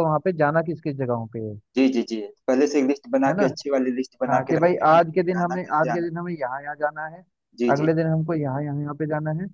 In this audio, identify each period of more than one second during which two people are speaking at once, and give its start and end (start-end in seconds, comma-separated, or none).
4.3-6.1